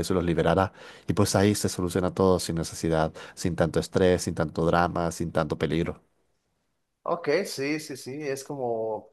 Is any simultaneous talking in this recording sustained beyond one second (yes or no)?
no